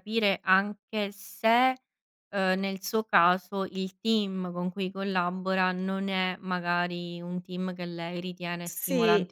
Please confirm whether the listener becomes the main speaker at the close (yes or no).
no